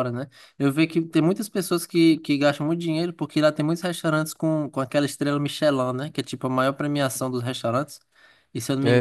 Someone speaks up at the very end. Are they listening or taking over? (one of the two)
listening